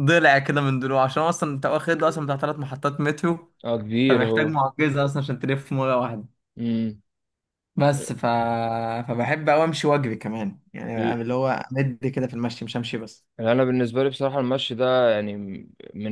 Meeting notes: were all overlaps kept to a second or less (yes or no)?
yes